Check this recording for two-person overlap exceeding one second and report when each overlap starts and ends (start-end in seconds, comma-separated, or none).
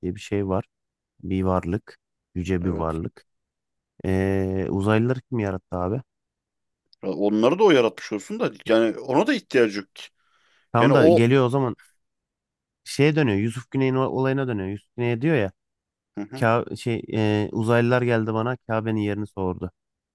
none